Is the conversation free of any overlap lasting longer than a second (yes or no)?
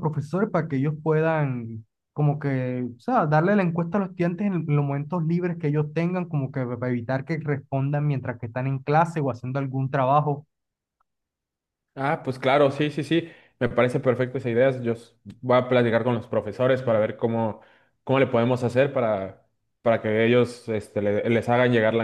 yes